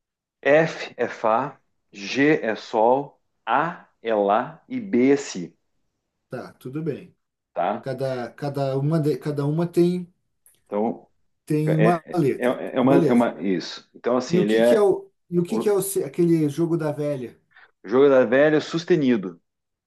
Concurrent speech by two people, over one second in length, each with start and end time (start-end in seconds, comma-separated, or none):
11.7-13.3